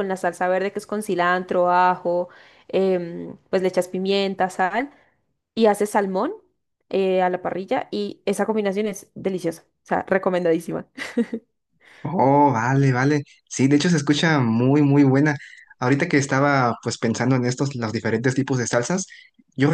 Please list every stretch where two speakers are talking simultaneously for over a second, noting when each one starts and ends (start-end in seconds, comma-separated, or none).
none